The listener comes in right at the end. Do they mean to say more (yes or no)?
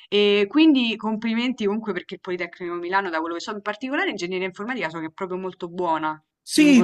yes